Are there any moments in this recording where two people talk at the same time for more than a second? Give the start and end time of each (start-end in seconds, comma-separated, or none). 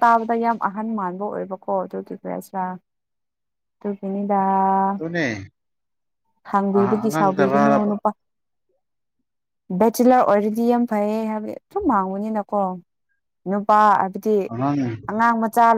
6.7-8.0